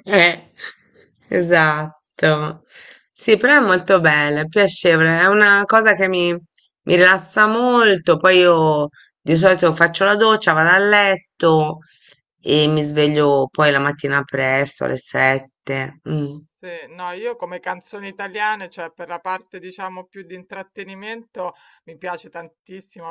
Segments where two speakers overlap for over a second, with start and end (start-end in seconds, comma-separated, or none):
none